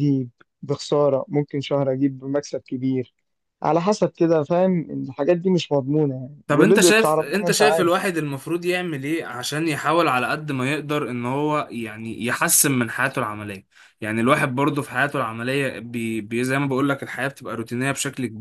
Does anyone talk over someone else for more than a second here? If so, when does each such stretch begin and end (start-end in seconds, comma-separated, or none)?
6.5-7.9